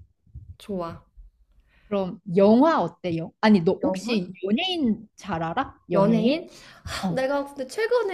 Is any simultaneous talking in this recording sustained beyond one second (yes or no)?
no